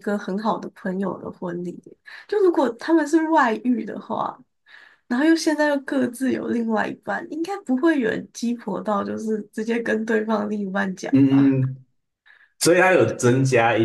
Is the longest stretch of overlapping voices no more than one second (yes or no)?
yes